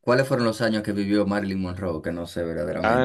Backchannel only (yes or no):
no